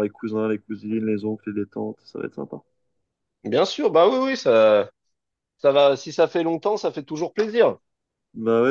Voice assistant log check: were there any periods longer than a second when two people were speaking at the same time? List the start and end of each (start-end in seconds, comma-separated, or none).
none